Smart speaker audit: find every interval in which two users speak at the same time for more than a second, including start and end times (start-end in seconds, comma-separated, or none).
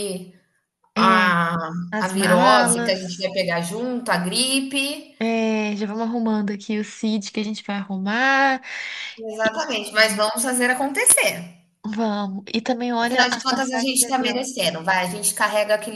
2.0-3.3, 13.0-14.5